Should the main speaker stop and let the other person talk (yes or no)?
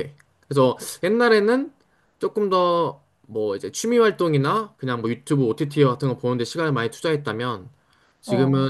no